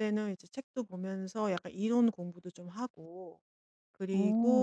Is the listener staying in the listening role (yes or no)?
yes